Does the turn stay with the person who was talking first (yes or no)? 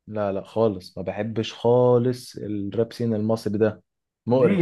no